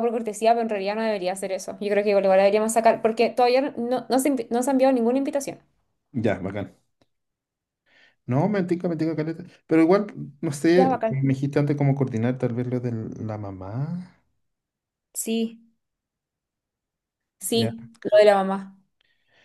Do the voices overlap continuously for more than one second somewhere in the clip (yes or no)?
no